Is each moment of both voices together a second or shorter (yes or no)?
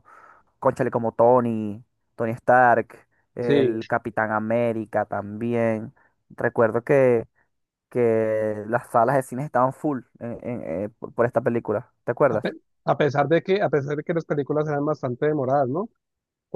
yes